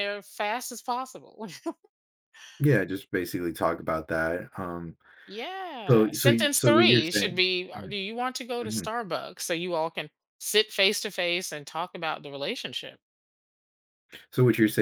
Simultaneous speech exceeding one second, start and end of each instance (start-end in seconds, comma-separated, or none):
5.9-7.9